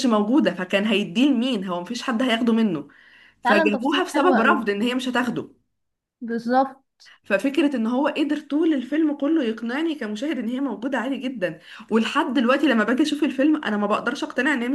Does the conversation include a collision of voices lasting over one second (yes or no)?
yes